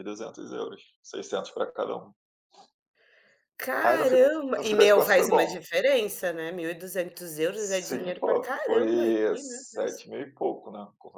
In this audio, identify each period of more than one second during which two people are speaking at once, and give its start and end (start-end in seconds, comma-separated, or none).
3.9-5.6, 7.5-10.0